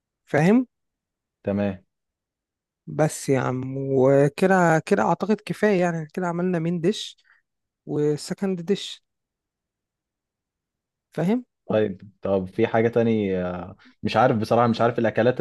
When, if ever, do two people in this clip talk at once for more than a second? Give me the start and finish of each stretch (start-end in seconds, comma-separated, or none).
none